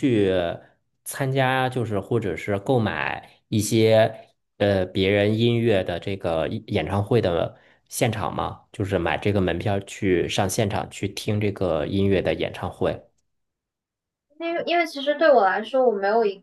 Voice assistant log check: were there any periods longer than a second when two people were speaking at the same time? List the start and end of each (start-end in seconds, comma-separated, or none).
none